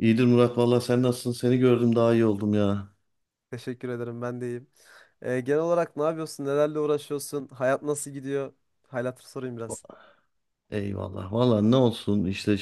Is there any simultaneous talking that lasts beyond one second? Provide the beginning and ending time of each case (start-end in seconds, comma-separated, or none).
none